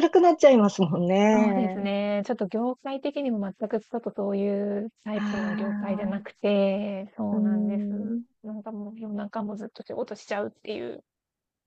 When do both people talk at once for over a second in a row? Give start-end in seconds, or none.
5.2-6.4